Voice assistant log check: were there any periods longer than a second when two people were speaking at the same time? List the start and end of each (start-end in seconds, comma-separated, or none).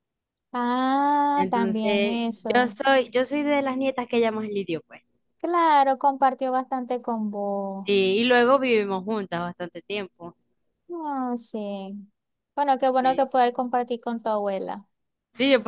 1.4-2.8